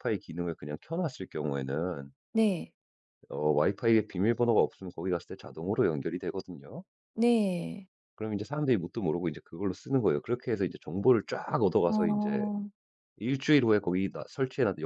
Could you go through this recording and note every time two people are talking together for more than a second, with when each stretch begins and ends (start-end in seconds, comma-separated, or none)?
none